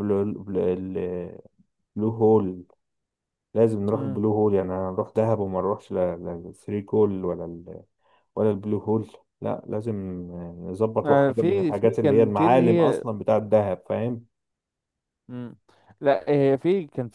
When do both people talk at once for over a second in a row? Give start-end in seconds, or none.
11.0-13.0